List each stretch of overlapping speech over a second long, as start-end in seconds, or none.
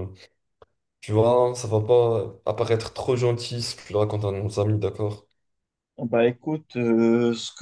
none